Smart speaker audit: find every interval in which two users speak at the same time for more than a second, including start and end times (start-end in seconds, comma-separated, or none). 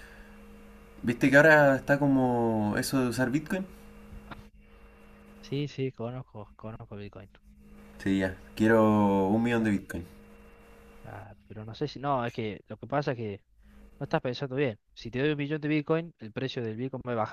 none